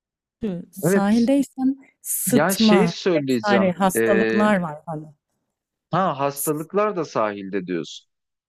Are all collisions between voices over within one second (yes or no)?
no